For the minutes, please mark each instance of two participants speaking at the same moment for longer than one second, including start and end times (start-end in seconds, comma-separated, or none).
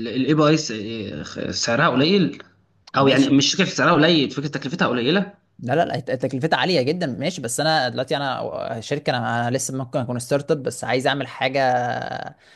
none